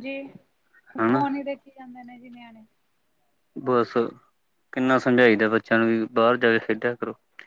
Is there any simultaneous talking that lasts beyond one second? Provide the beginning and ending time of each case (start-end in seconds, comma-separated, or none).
none